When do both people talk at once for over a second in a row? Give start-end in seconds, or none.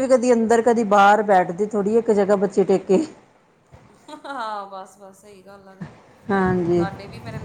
none